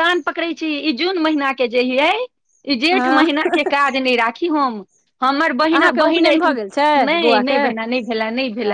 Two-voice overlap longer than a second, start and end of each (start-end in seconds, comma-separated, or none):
5.7-7.6